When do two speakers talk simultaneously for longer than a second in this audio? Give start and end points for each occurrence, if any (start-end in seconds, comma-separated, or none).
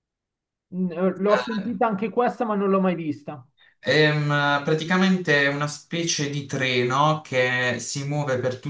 none